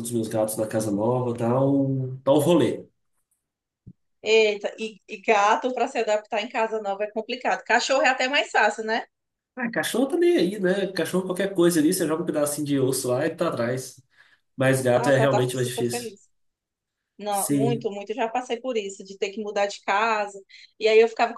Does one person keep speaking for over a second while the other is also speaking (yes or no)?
yes